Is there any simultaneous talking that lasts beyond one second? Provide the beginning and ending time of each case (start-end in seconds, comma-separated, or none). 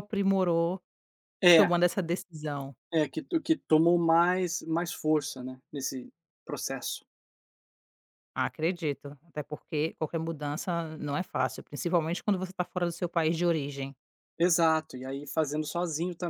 none